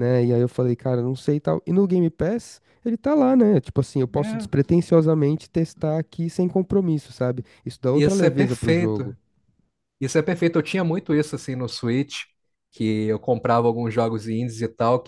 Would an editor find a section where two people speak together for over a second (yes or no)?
yes